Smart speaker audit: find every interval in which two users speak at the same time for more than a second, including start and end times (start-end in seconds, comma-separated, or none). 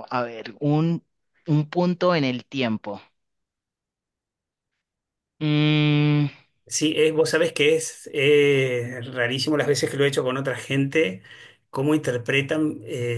none